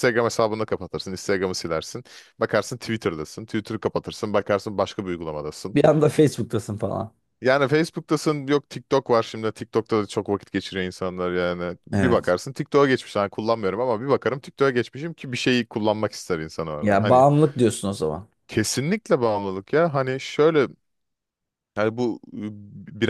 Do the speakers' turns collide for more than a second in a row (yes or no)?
no